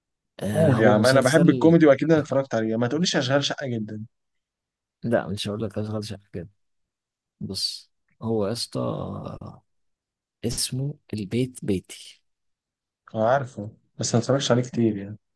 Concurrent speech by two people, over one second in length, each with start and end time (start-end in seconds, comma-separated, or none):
0.5-1.8